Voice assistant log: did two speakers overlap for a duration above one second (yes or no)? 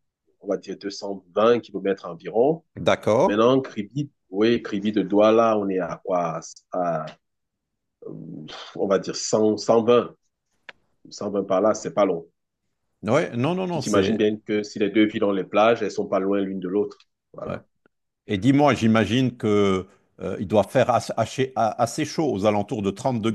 no